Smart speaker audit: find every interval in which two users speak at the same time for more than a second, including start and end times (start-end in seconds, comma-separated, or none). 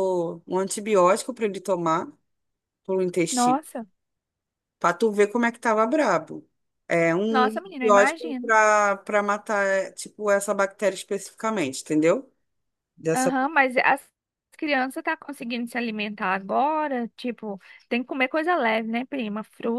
7.3-8.5